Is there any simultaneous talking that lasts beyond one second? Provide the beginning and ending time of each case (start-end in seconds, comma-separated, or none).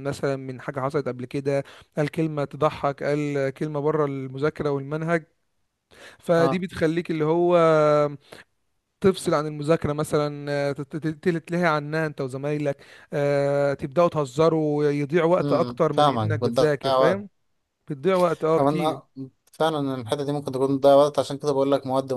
15.4-17.2